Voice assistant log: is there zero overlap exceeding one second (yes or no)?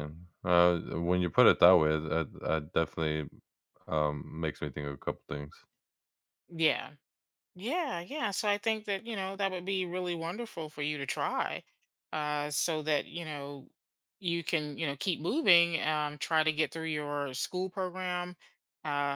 yes